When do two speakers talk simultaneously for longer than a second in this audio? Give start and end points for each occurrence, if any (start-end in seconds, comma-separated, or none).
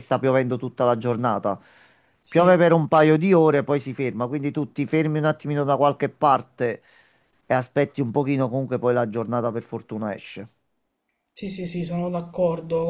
none